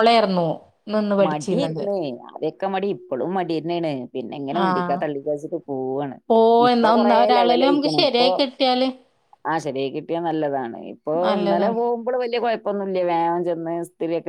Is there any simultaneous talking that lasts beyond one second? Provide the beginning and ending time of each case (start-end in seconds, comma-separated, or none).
6.7-8.3